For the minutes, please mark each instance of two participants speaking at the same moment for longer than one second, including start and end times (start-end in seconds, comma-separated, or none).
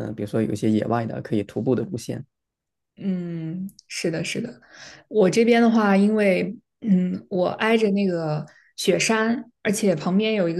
none